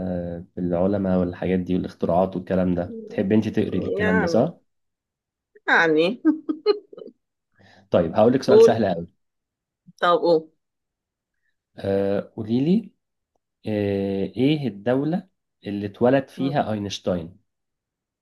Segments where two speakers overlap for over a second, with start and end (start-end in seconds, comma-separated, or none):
none